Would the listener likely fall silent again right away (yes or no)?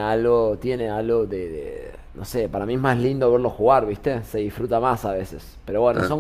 no